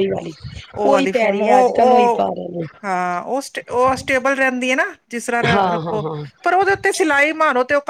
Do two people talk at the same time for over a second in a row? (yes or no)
yes